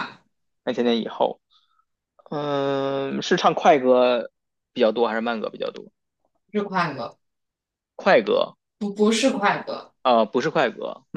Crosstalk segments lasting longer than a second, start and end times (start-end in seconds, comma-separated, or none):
none